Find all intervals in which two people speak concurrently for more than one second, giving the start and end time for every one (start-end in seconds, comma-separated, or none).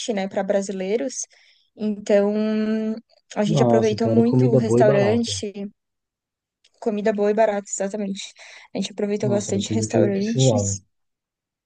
3.5-5.4, 9.2-10.8